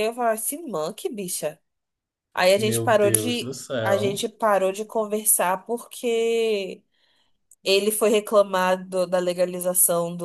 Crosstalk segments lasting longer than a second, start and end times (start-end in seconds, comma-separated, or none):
2.5-4.2